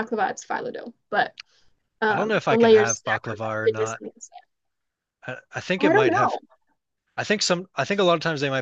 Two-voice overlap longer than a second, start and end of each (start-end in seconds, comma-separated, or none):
2.1-4.0